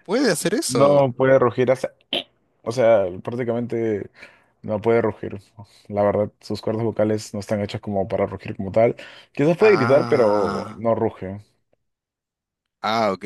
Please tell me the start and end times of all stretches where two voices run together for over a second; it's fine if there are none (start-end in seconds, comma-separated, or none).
9.6-10.8